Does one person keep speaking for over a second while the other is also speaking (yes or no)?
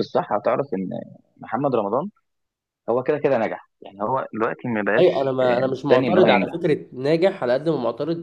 yes